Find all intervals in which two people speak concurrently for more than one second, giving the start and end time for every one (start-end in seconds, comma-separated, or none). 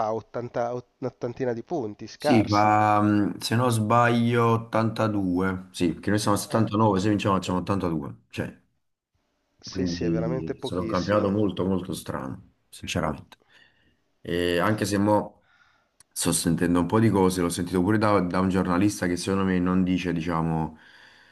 9.6-11.3